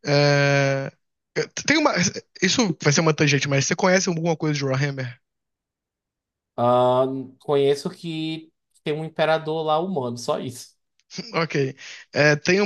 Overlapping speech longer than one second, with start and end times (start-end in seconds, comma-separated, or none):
none